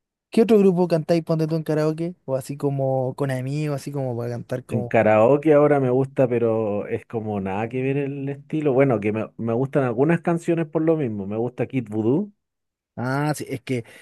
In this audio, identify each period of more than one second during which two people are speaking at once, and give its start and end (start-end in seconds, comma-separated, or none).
none